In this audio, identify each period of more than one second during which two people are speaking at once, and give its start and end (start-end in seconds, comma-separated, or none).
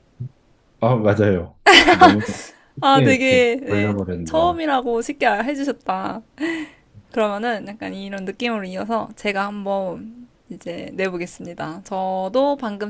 2.8-4.6